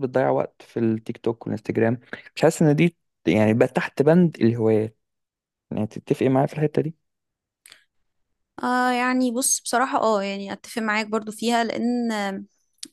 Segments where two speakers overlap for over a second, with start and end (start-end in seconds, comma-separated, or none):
none